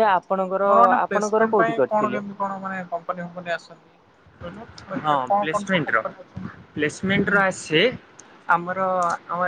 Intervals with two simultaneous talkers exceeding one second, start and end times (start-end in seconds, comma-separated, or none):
0.6-2.3